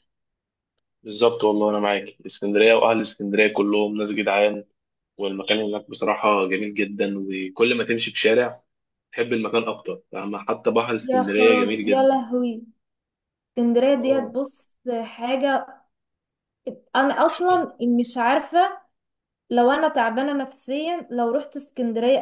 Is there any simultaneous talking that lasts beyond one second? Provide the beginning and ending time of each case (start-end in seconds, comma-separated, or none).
11.0-12.2